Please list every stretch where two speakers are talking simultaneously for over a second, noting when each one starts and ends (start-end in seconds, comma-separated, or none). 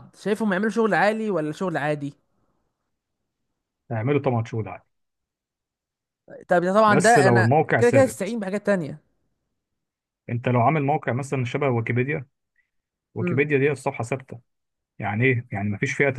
6.9-8.4